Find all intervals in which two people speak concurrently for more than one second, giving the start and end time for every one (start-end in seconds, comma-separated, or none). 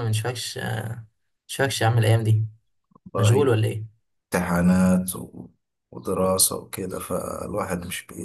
none